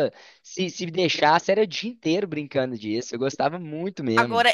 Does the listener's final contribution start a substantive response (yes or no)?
yes